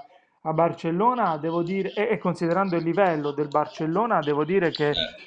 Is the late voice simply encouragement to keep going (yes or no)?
yes